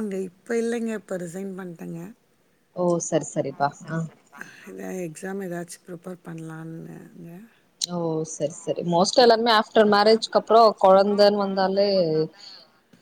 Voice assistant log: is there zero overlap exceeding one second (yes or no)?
no